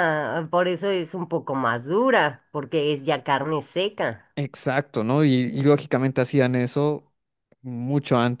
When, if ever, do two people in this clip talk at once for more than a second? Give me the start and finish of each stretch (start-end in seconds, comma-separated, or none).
none